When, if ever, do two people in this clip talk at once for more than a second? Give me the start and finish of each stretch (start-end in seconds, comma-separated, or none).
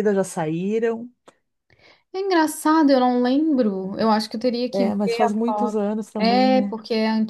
4.7-6.8